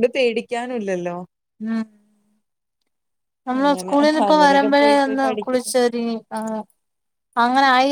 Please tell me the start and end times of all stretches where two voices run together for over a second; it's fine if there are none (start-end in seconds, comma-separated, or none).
3.6-5.7